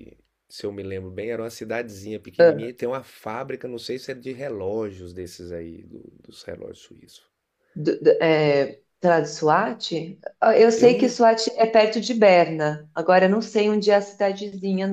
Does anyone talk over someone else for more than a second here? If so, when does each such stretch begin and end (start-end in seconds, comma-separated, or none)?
none